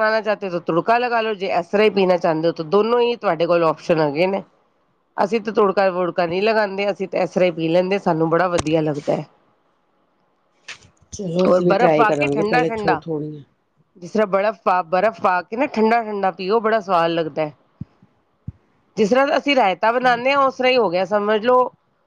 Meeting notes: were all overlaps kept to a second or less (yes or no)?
no